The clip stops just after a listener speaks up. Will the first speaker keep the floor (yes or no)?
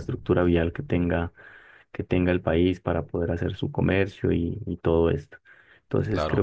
yes